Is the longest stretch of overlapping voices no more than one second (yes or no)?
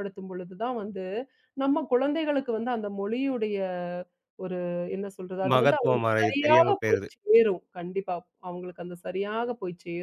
no